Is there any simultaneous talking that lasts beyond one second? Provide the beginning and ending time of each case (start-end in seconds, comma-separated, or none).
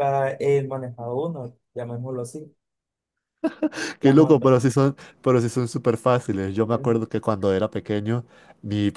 none